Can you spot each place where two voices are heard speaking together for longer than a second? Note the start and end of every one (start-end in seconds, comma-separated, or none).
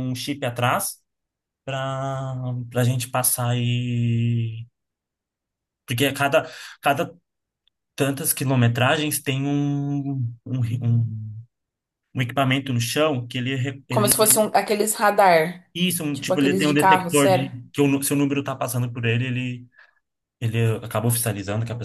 16.1-17.5